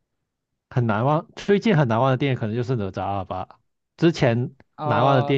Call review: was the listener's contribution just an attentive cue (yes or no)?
yes